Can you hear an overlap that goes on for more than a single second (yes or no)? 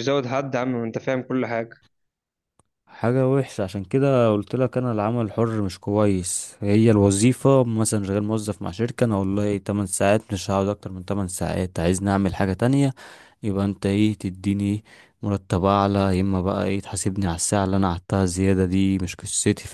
no